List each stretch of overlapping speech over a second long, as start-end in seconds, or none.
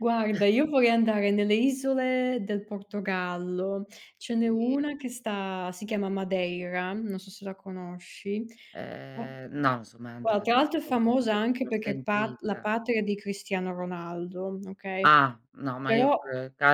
10.2-12.7